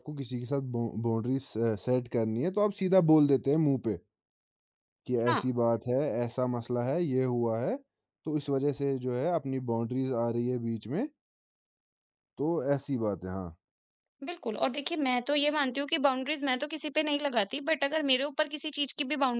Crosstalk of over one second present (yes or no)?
no